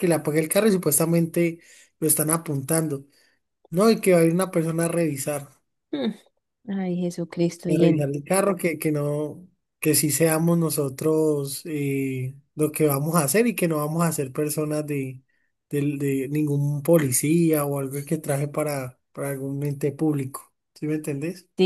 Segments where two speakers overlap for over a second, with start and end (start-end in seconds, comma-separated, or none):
none